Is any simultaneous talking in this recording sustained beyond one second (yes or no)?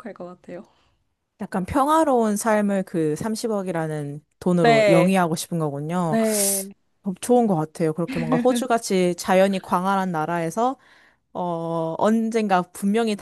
no